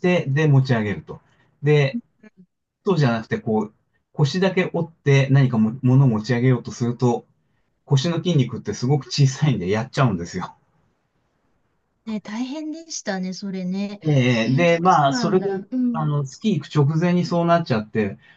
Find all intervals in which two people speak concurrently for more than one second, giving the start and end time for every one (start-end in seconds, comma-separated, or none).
14.4-16.1